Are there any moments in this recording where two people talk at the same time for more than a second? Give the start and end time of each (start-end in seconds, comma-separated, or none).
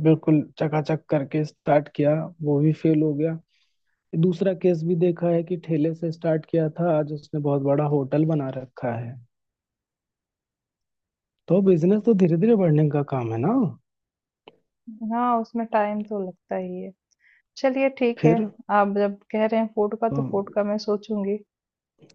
none